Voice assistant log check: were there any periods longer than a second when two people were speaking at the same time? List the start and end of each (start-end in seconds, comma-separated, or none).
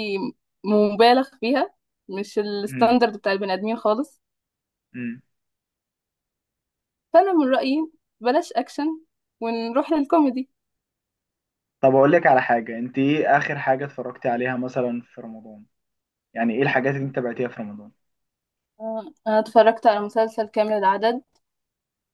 none